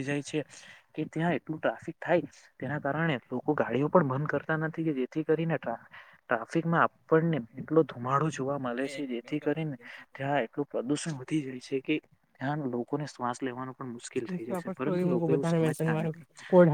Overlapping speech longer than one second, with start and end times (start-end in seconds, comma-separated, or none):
14.1-16.1